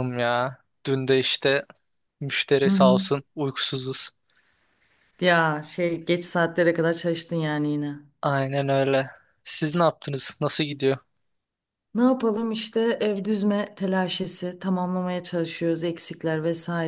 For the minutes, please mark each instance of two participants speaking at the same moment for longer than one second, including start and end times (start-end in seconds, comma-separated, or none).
none